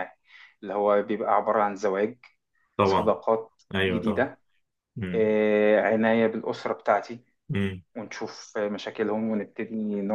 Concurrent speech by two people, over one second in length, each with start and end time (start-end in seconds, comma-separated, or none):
none